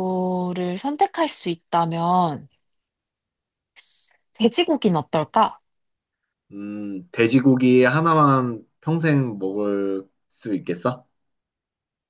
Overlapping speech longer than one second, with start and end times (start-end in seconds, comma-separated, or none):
none